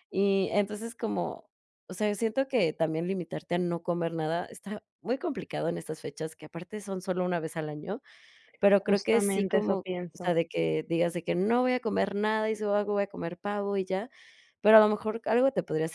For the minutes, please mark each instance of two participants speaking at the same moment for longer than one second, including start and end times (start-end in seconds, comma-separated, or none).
8.7-10.4